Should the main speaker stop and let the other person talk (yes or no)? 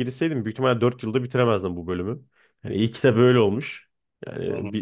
no